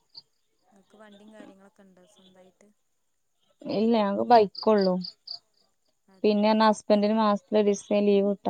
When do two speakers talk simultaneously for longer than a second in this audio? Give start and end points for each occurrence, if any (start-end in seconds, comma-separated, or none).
none